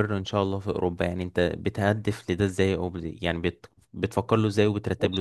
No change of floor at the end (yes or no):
no